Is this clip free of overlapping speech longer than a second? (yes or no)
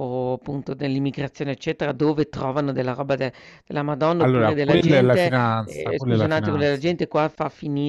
no